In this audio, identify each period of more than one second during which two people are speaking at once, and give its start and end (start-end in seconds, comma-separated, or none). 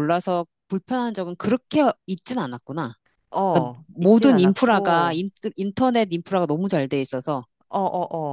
3.5-5.2